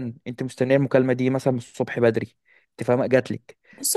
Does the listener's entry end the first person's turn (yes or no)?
yes